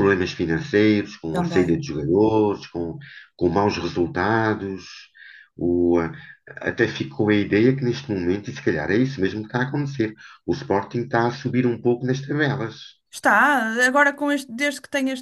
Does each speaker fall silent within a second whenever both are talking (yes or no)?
yes